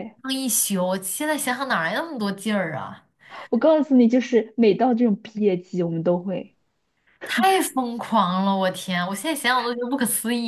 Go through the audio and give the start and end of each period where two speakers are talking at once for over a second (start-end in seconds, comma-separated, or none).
none